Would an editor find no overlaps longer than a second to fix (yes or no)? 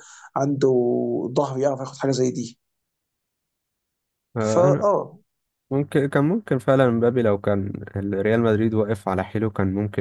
yes